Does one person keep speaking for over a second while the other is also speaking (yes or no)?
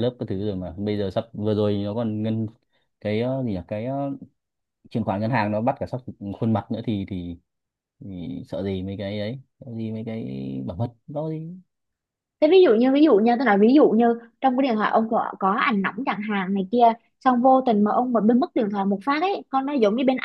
no